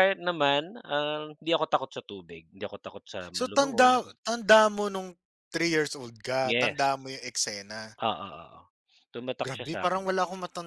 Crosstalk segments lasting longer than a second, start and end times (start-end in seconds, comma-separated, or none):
none